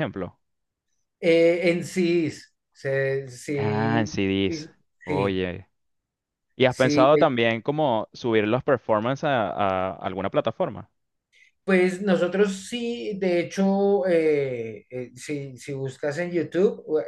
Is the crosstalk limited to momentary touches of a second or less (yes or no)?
no